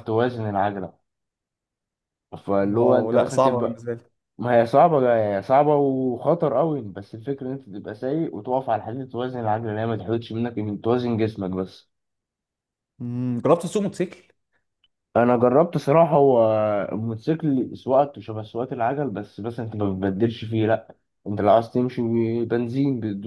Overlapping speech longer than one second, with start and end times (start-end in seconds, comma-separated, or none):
2.6-3.8